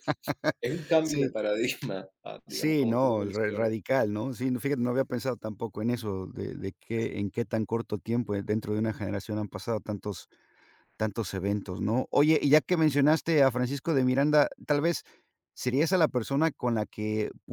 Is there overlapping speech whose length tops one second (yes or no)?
yes